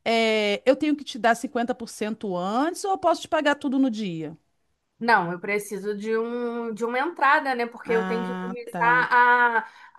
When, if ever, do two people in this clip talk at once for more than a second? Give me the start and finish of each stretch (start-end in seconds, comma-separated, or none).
7.8-9.1